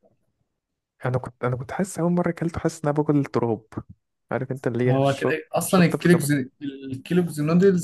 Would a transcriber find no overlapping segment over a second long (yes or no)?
no